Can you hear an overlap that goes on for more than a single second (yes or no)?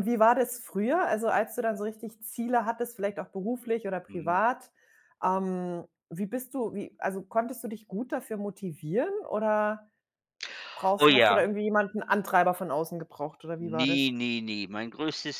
no